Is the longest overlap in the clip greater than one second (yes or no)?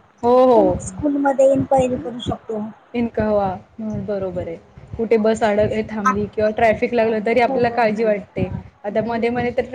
no